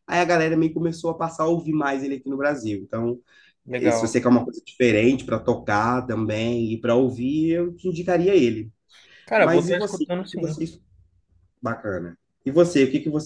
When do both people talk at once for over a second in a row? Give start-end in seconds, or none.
9.3-10.6